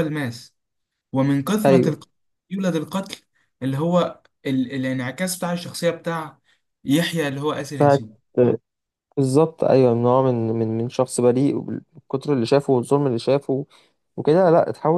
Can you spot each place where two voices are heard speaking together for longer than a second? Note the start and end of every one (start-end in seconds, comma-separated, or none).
none